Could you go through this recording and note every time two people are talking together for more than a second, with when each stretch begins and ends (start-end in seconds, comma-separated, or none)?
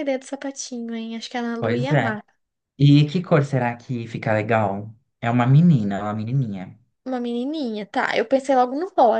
none